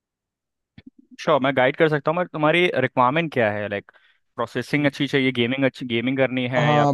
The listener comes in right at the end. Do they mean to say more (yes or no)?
yes